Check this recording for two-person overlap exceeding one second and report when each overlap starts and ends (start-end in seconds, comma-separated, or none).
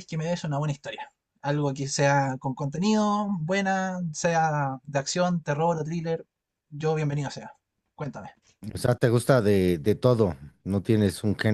none